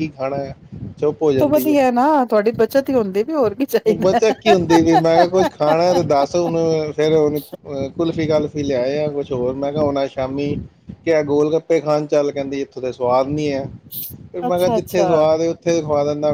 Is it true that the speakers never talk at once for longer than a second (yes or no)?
yes